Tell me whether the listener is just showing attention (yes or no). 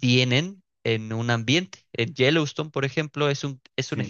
yes